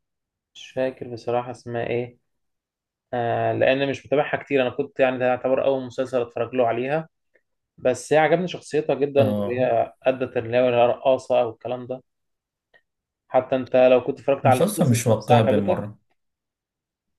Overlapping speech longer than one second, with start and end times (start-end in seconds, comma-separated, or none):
14.4-15.9